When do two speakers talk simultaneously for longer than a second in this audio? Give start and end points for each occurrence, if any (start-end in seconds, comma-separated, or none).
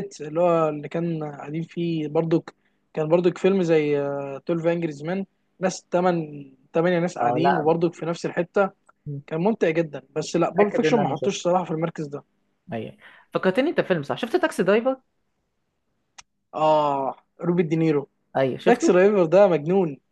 10.2-11.5